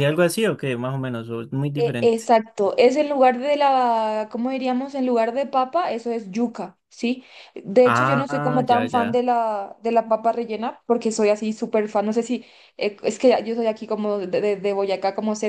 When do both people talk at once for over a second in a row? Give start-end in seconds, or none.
7.8-9.2